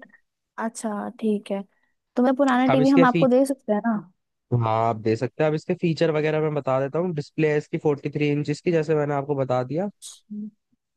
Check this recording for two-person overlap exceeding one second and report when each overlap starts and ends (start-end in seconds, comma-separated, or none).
none